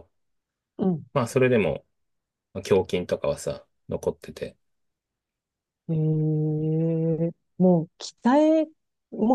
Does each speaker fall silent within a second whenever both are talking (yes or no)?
yes